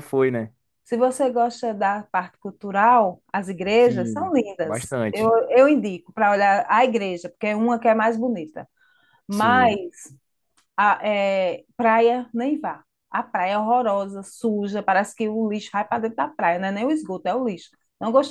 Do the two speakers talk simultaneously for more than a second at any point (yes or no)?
yes